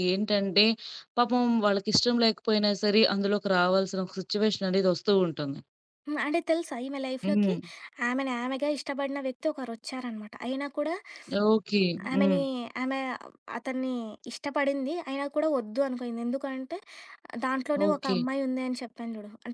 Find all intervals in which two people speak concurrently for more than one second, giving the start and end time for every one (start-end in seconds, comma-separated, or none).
none